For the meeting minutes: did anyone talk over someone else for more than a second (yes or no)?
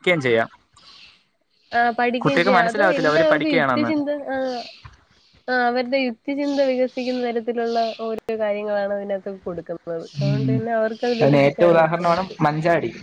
yes